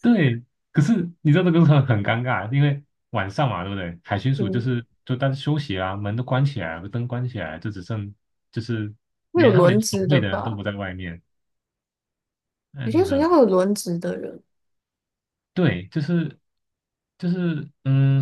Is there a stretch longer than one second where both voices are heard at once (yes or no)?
yes